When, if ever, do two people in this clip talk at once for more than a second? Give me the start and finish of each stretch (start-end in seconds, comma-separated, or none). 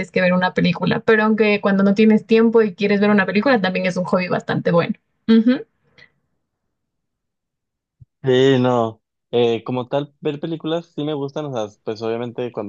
none